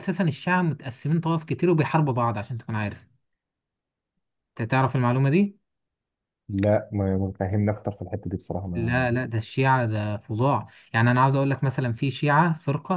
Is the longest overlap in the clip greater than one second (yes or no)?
no